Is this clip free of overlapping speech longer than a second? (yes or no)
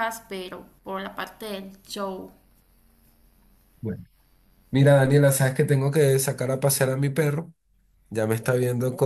yes